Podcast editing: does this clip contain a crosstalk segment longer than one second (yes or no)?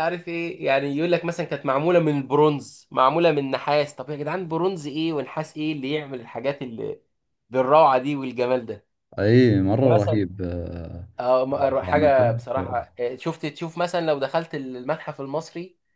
yes